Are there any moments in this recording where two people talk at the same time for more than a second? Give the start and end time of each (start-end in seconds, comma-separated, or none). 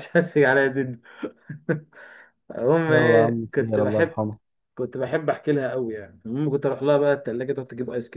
2.9-4.1